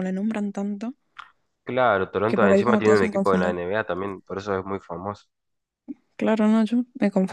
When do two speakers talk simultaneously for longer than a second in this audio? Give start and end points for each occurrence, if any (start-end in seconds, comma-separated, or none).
2.2-3.6